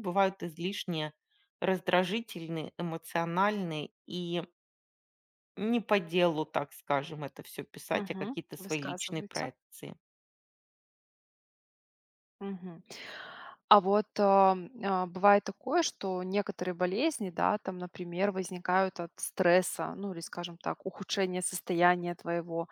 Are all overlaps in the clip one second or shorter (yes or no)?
no